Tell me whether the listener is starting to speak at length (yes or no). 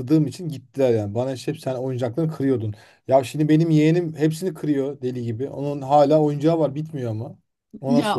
yes